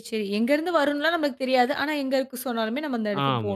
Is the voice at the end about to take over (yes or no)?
yes